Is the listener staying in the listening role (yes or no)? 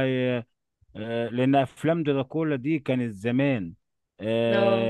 yes